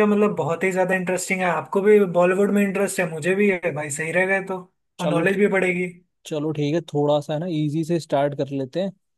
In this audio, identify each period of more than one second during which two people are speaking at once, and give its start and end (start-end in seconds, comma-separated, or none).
none